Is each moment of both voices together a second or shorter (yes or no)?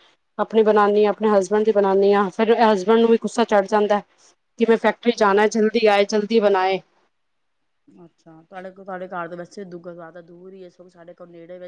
yes